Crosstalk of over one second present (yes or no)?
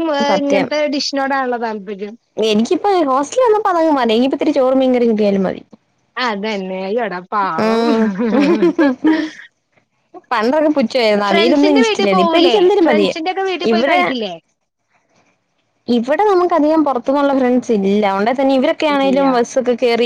yes